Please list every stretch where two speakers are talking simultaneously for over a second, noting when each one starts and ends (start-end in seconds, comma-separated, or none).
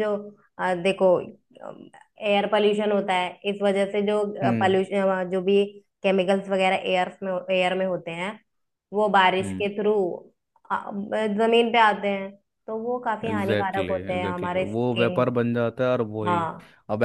13.3-15.3